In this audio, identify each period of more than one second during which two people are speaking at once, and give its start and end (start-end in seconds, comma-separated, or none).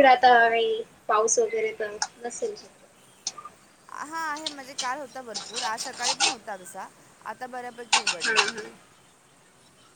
none